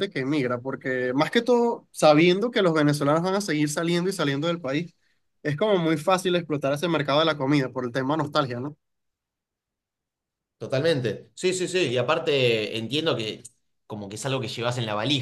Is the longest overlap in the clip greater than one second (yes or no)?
no